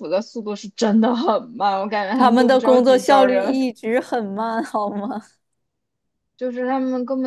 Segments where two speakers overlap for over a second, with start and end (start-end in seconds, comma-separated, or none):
2.1-3.7